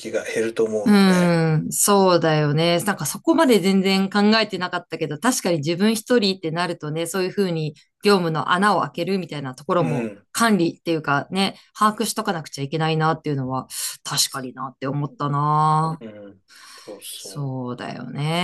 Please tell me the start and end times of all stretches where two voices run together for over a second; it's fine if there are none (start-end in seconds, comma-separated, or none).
none